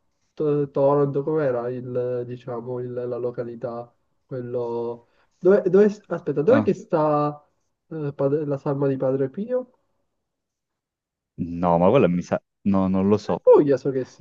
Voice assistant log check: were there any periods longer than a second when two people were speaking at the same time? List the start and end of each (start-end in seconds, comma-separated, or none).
none